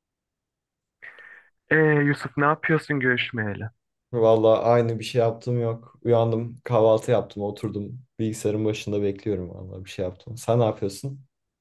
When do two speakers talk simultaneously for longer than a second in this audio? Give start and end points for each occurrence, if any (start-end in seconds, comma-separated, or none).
none